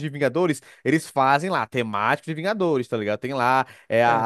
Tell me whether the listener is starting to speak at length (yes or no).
no